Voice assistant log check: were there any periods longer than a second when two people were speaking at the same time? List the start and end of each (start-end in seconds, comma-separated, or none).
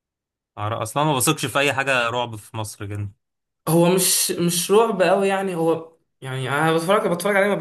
none